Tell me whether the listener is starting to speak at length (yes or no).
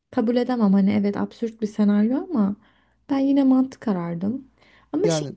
no